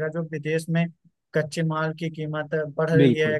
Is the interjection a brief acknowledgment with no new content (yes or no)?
yes